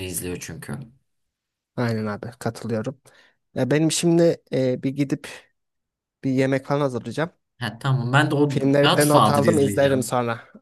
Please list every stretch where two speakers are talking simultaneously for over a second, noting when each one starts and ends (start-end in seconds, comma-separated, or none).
8.5-10.1